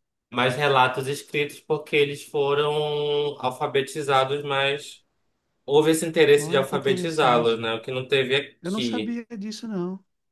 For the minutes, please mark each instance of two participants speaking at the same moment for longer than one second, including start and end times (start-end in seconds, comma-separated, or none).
6.4-7.6